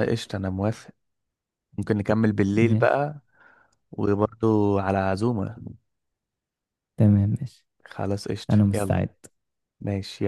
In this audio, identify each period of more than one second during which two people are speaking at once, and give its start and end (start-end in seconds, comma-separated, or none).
none